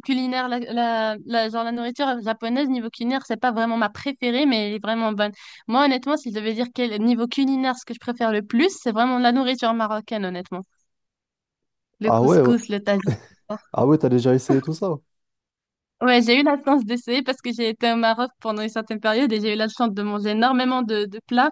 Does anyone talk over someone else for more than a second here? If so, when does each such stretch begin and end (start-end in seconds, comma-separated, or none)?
none